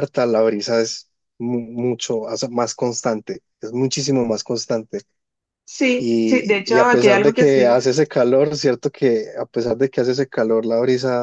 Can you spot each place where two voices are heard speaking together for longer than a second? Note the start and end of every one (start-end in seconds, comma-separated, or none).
6.0-7.8